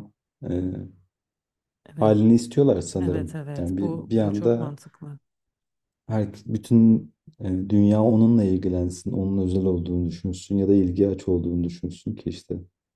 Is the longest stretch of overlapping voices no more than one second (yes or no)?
no